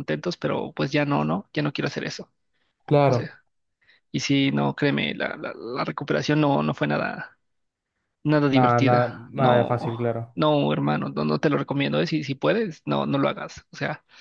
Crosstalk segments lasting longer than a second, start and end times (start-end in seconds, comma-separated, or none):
8.5-9.8